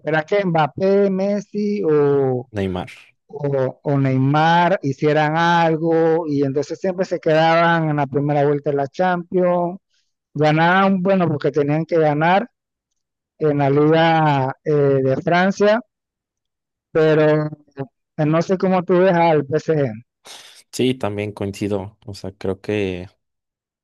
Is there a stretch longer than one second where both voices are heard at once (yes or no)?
no